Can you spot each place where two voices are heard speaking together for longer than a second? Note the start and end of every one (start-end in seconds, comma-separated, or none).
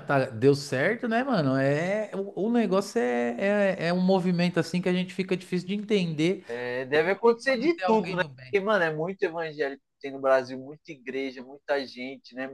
6.9-8.6